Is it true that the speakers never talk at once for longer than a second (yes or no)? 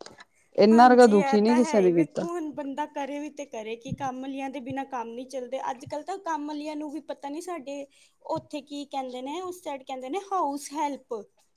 no